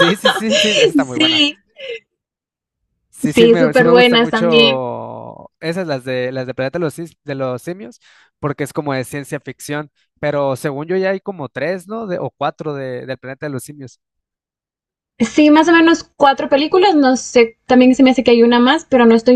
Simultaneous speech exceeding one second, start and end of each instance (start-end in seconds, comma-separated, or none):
3.2-4.8